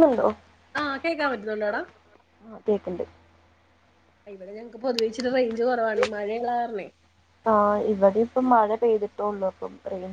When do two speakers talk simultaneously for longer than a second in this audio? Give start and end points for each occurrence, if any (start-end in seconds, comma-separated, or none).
none